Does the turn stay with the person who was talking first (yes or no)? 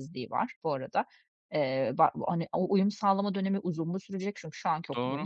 yes